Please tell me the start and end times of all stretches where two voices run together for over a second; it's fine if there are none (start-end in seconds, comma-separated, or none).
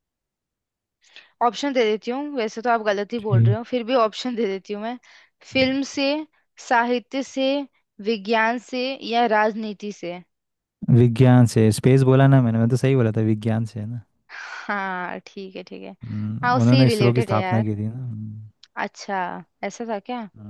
16.4-17.7